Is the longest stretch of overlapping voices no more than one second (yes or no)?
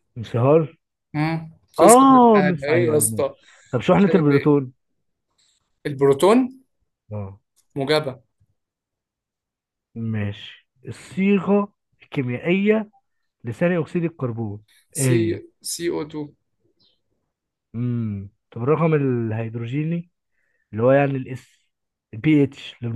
no